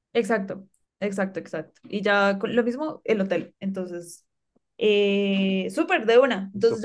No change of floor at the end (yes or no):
yes